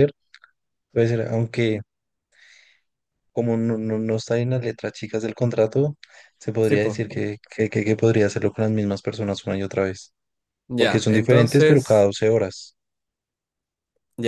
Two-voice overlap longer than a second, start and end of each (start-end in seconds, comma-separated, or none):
10.8-12.1